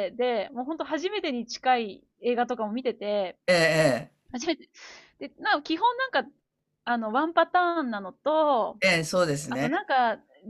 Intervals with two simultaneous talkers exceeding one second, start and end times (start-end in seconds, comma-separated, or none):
none